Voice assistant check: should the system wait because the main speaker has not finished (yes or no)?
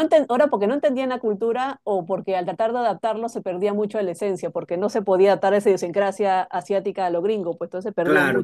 no